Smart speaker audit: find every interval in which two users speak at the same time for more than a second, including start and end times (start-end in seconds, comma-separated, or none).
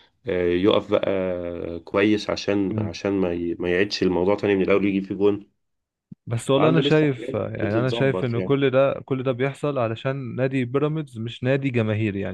6.6-8.6